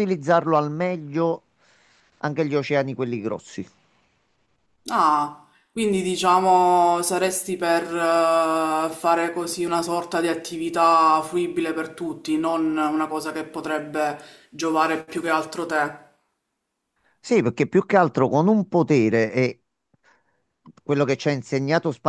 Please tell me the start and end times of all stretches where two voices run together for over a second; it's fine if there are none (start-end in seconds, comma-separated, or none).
none